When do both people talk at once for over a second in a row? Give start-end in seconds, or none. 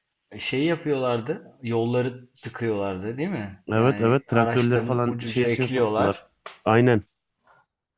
3.7-6.2